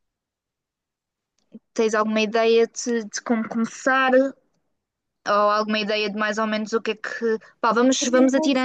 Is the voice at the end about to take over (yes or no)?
no